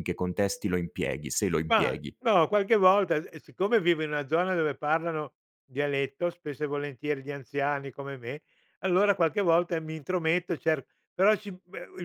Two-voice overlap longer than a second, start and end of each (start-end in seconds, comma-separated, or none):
none